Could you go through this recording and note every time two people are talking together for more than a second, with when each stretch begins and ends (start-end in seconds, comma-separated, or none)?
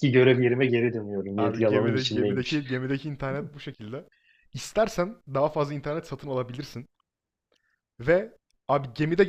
1.4-2.6